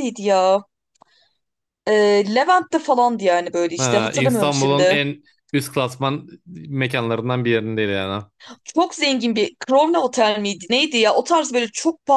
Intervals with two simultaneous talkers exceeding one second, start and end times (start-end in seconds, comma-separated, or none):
3.8-5.0